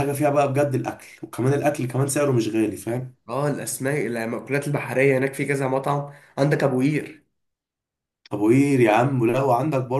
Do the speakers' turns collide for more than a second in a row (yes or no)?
no